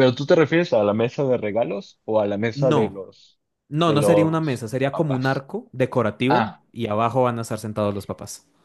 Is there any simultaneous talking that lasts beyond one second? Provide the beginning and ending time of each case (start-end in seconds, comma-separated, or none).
3.8-5.5